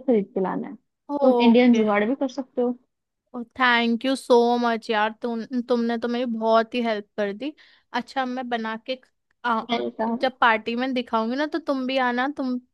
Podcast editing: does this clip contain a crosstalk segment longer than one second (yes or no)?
no